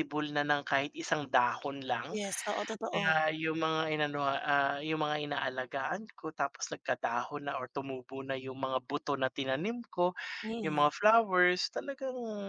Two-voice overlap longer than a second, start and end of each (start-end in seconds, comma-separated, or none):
none